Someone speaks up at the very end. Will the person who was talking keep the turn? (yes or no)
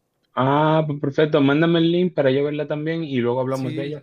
no